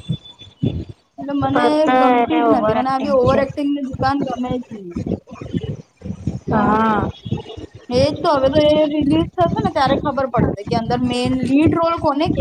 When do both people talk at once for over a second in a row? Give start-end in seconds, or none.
1.5-3.4